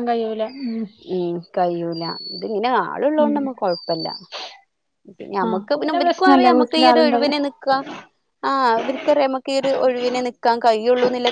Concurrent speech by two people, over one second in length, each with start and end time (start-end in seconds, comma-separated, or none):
5.5-7.3